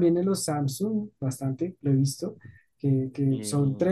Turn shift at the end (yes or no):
no